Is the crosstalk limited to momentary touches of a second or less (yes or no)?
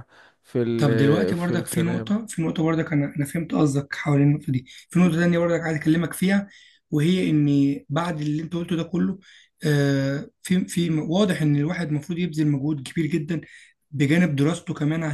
no